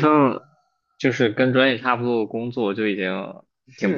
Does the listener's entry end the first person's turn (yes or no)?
yes